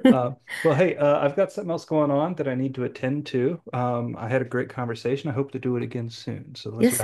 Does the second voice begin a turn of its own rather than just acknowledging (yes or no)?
yes